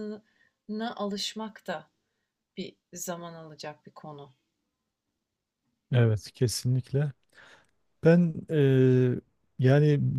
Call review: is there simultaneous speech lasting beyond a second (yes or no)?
no